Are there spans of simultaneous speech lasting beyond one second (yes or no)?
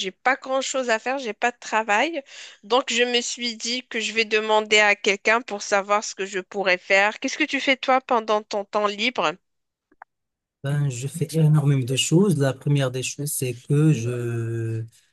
no